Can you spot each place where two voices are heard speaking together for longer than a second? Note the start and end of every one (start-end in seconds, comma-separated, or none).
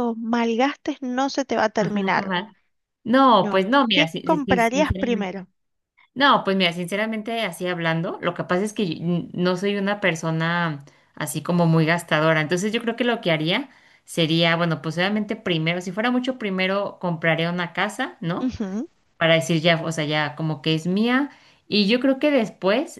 3.4-5.3